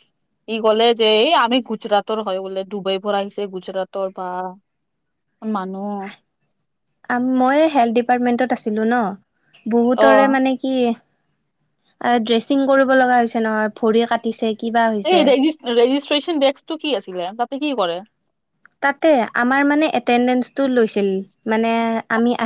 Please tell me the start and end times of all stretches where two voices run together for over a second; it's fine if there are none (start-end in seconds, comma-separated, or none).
none